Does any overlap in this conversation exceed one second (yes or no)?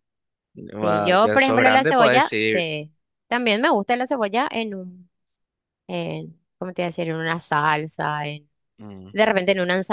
yes